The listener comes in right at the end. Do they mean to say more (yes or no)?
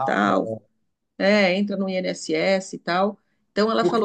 no